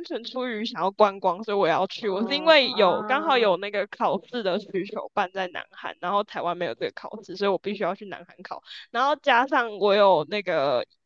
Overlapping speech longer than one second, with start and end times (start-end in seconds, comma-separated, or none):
2.0-3.5